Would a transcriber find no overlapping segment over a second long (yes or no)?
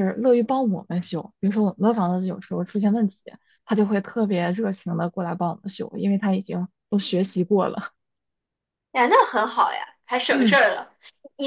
yes